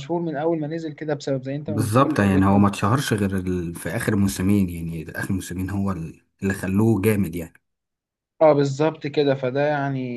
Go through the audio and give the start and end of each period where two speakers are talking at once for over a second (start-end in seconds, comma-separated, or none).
1.7-2.9